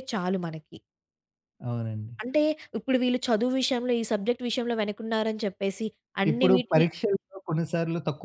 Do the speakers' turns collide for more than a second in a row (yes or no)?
no